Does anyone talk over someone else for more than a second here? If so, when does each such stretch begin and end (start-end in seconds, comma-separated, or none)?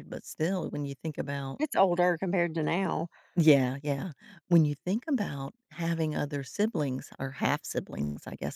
none